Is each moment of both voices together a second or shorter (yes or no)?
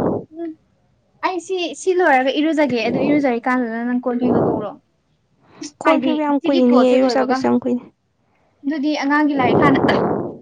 no